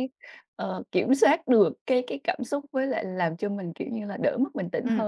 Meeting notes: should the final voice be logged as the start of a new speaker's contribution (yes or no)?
yes